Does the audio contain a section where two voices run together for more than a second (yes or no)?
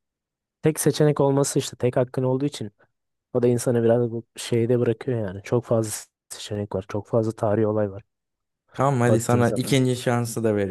no